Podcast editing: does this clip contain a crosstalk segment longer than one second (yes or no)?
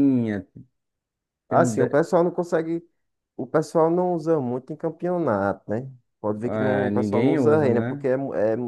yes